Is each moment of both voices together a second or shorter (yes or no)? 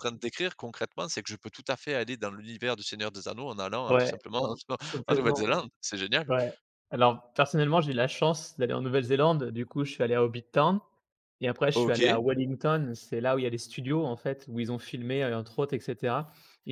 yes